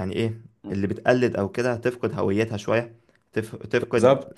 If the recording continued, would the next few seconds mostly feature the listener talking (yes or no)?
no